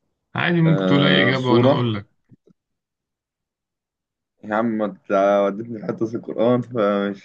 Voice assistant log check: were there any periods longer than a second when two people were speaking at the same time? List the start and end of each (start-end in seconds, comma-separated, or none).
0.7-1.9